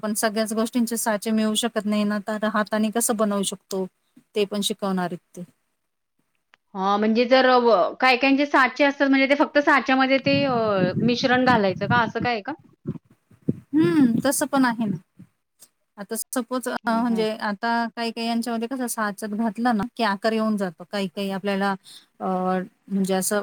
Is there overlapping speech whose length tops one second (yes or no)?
no